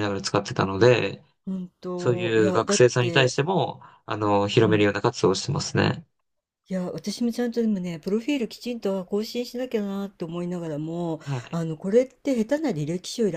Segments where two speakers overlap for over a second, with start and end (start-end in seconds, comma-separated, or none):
2.0-3.4